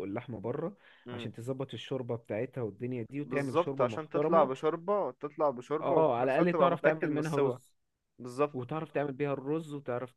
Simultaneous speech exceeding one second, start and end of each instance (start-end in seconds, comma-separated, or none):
3.2-4.5, 5.8-7.6